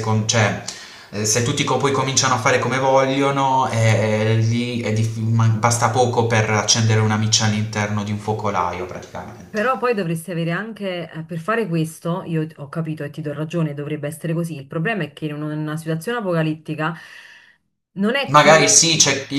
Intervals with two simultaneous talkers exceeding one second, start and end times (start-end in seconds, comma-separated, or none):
none